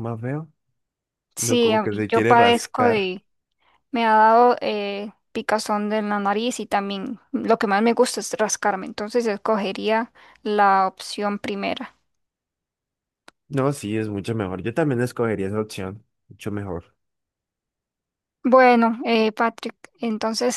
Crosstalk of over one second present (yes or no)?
yes